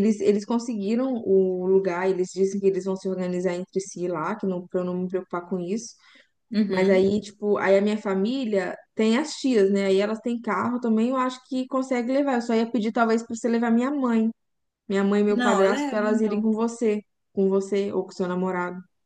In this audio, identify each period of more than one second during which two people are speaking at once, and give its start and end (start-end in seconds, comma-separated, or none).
15.3-16.5